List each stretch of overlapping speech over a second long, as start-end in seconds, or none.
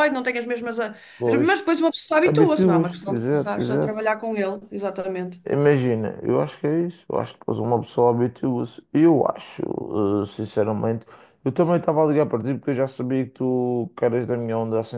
2.2-4.1